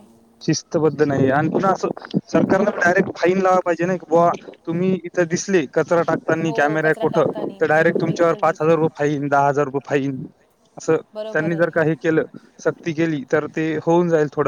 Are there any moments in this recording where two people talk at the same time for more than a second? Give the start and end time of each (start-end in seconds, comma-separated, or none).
6.5-8.7